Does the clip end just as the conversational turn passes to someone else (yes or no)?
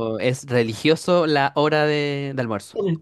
no